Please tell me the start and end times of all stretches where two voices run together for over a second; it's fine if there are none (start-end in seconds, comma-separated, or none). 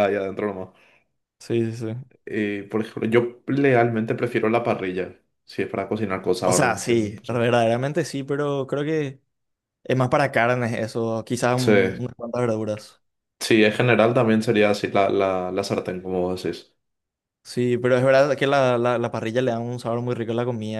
none